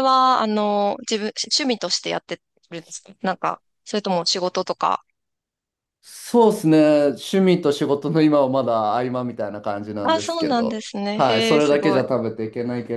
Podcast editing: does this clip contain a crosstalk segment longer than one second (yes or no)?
yes